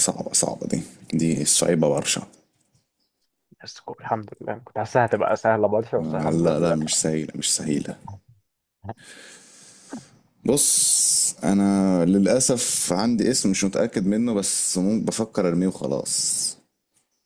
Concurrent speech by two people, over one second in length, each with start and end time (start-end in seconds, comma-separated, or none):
6.0-7.2